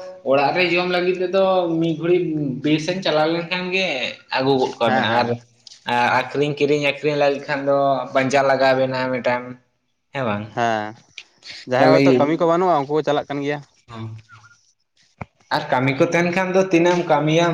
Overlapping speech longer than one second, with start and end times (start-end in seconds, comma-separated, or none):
none